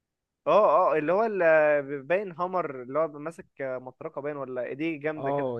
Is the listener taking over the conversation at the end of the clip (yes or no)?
yes